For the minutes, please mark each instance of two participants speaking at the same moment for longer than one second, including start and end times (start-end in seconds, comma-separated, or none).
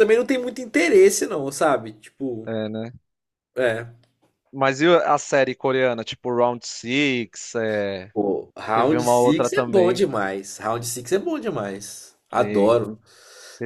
8.7-10.1